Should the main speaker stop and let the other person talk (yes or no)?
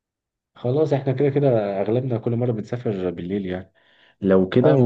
no